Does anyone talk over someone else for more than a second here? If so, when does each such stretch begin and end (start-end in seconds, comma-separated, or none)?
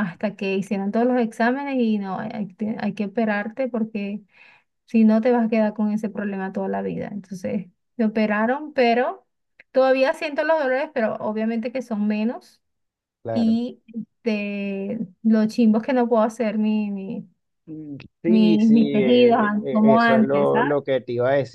18.3-20.7